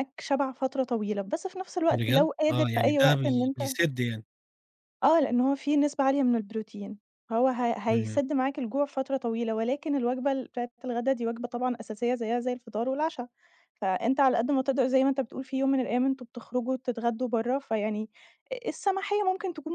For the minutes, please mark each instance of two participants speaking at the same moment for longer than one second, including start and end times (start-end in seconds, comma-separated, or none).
1.9-3.8